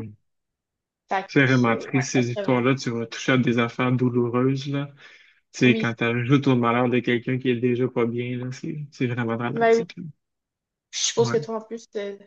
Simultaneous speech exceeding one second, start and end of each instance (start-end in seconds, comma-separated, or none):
1.3-2.7